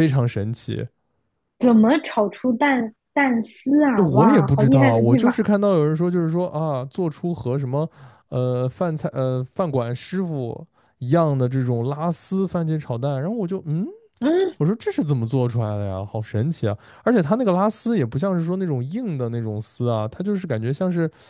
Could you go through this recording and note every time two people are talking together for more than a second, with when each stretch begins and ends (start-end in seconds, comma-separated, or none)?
4.0-5.5